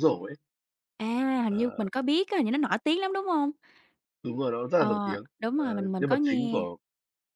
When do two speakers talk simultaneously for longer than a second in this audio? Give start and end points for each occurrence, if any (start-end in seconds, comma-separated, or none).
4.7-6.6